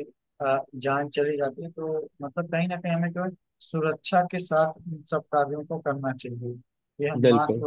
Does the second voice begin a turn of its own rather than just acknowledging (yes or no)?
no